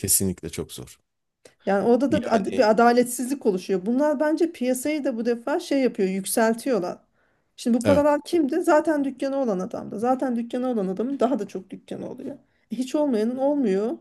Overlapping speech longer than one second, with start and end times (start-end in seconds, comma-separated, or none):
none